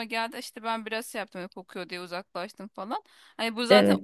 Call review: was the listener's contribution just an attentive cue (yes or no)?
yes